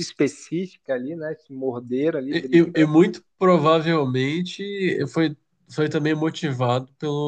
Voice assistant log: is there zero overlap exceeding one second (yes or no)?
yes